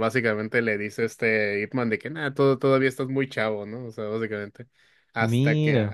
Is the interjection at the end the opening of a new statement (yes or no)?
no